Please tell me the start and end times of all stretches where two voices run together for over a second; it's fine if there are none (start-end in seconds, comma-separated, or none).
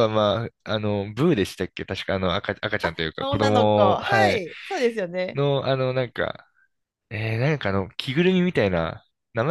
3.2-4.4